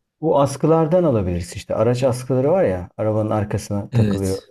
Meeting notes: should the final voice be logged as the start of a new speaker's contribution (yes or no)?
no